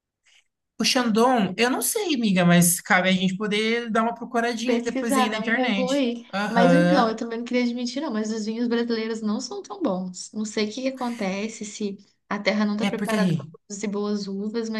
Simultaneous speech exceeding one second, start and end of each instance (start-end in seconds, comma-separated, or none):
4.7-7.2